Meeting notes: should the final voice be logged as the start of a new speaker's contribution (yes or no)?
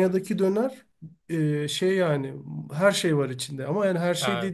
no